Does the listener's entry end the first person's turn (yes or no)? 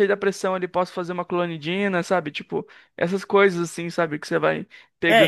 yes